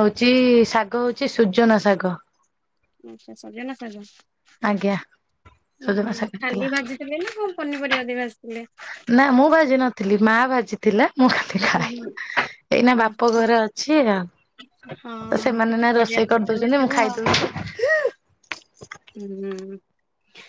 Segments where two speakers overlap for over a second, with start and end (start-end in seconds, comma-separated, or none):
15.3-16.9